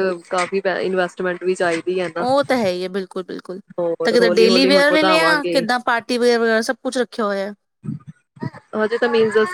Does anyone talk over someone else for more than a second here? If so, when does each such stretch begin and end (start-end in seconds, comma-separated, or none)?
4.0-5.6